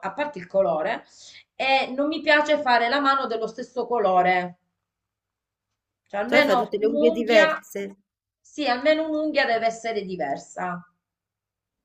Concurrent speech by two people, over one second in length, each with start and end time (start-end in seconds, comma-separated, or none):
6.2-7.6